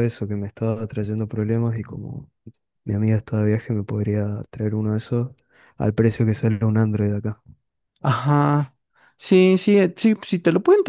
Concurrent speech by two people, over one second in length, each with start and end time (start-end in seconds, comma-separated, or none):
none